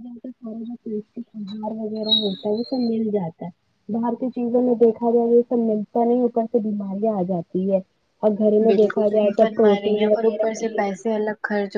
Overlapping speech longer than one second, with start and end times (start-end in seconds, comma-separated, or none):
8.6-10.7